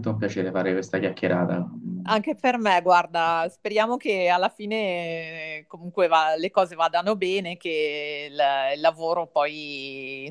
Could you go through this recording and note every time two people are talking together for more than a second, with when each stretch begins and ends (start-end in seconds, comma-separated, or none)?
none